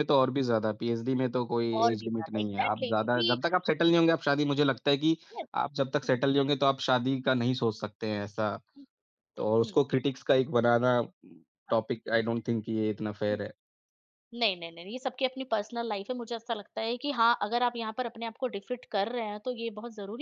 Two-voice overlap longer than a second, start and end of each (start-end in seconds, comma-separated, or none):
1.8-3.4